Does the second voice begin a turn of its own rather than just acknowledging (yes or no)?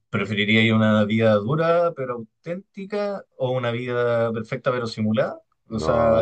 yes